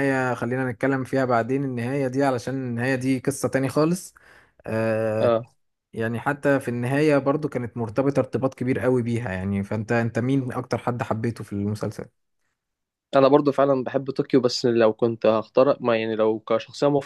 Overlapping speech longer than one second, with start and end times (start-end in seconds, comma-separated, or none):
none